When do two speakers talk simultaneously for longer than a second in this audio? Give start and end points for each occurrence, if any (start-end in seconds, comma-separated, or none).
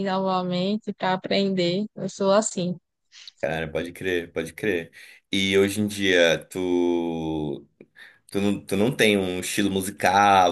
none